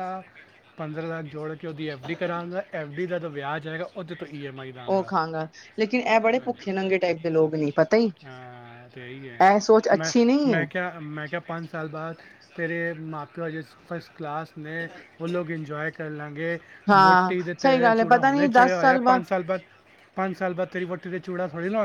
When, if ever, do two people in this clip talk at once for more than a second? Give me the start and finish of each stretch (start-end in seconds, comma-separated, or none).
17.0-19.2